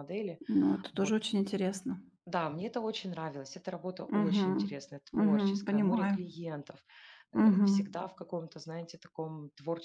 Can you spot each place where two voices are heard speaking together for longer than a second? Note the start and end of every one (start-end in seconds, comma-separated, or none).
4.2-6.2